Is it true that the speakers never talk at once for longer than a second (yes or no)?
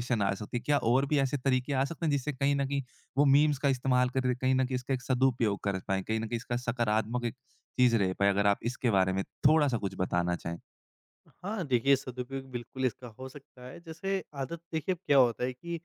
yes